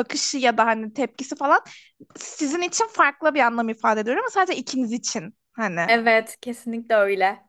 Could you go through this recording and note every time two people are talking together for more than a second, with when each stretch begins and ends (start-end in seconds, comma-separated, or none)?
none